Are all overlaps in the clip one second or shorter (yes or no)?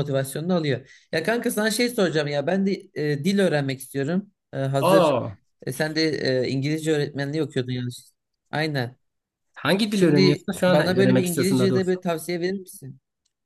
no